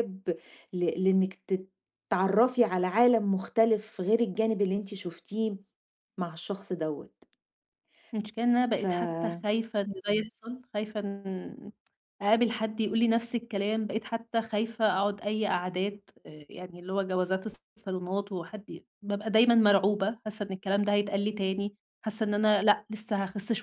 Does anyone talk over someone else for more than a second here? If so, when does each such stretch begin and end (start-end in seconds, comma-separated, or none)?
none